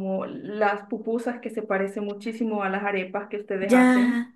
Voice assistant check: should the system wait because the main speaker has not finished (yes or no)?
no